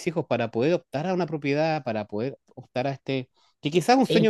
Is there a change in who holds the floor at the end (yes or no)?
no